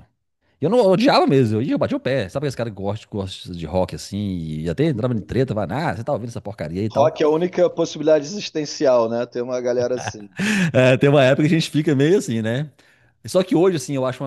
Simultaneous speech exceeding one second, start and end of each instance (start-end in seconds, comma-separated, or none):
none